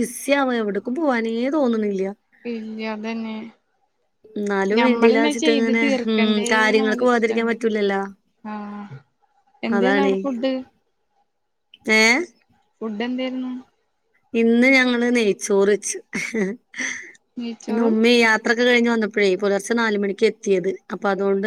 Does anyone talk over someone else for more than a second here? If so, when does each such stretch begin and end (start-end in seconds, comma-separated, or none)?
4.8-7.5